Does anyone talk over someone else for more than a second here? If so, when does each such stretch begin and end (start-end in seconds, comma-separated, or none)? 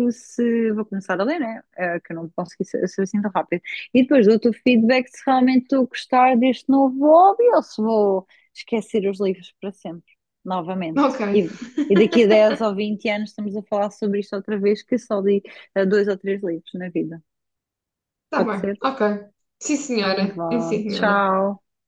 20.0-21.3